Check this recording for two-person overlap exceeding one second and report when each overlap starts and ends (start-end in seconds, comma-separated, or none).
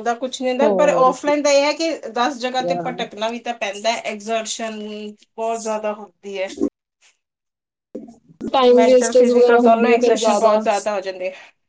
8.8-10.6